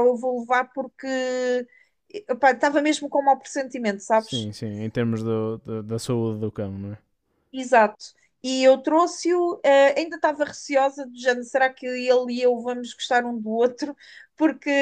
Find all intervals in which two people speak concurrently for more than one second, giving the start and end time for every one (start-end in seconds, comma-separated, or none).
none